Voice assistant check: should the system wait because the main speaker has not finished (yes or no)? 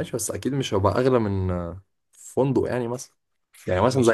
no